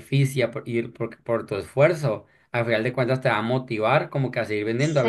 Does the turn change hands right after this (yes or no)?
no